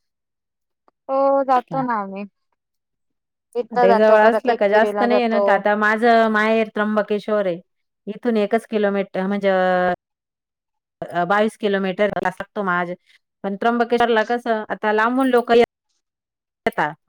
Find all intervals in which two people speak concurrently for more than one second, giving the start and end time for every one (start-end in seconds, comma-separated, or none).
3.7-5.4